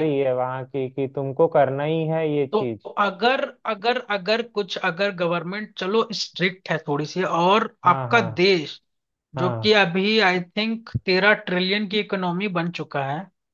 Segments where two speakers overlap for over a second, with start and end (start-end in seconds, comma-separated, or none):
none